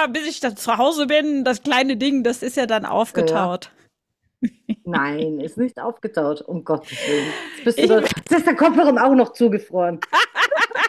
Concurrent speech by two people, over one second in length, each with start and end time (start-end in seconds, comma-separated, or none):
none